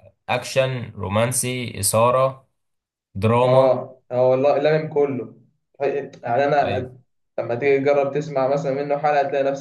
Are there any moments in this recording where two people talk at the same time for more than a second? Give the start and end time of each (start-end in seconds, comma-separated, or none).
none